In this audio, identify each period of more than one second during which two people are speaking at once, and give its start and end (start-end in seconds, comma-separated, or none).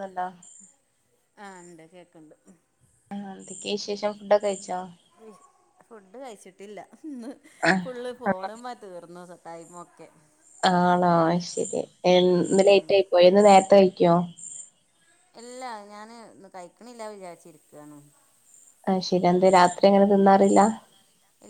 none